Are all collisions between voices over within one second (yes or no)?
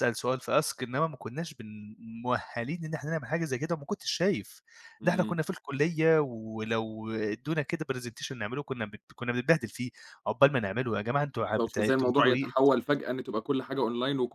no